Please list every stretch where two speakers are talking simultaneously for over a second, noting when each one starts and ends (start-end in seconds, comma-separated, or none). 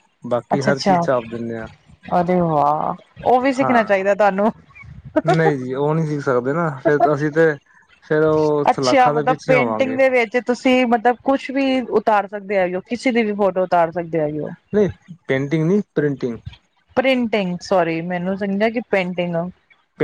8.7-10.0